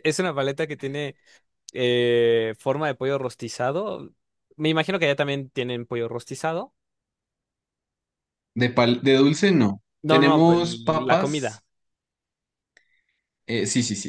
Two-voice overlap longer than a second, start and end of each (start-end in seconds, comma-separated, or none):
10.0-11.6